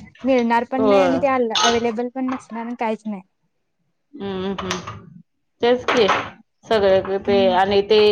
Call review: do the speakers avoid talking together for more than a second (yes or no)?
yes